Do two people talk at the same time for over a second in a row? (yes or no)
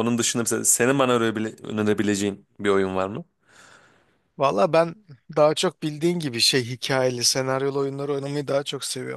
no